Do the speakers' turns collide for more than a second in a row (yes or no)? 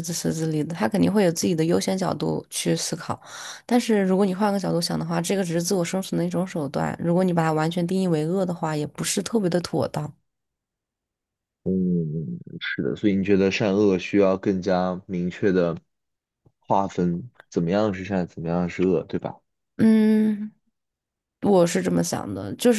no